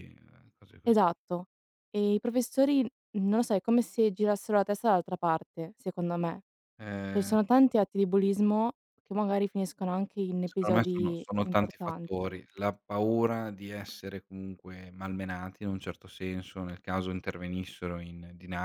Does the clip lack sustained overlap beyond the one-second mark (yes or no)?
no